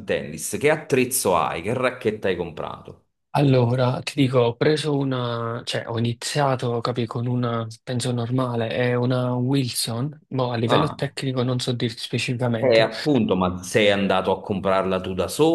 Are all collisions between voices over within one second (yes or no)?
yes